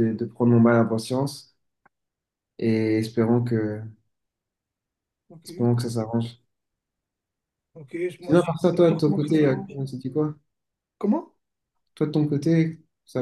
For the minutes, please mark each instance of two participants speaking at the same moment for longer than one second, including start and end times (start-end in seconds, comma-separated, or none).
8.2-9.8